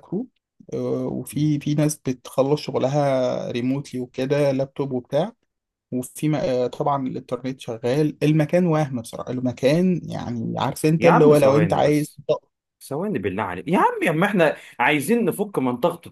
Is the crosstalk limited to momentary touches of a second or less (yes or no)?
no